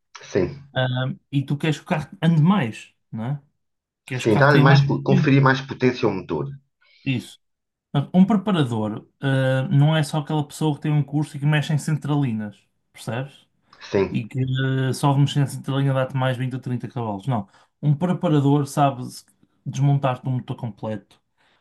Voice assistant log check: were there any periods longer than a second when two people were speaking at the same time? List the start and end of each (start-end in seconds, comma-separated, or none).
4.2-5.4